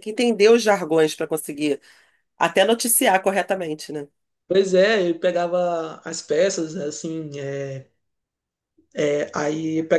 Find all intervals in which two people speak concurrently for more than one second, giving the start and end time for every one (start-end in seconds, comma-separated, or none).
none